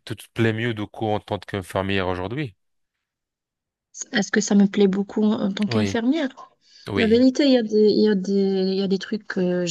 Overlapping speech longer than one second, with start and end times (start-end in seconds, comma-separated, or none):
none